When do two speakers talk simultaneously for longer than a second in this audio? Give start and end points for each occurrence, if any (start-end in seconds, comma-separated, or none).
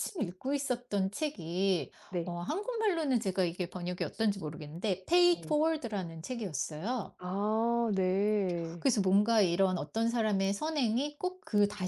none